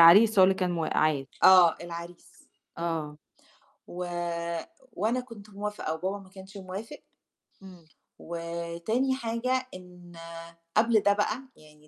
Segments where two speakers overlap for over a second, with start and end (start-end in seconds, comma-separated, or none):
none